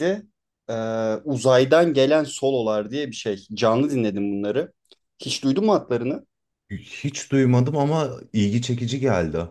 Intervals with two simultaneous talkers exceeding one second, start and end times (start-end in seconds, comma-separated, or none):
none